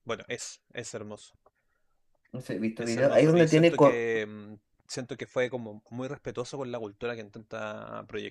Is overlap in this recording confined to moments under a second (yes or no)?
no